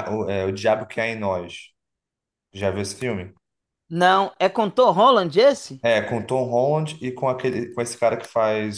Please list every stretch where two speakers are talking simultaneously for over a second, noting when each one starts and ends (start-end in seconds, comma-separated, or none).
none